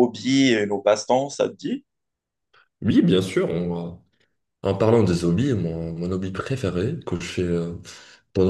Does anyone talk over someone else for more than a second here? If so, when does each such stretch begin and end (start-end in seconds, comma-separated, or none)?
none